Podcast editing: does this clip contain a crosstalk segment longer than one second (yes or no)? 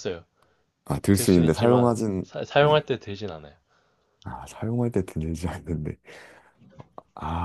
yes